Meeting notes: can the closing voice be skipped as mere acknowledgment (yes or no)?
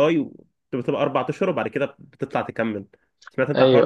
no